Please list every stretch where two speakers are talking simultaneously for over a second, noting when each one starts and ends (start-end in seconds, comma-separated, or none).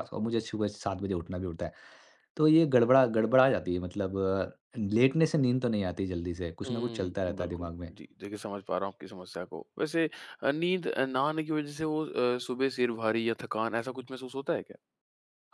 6.7-7.9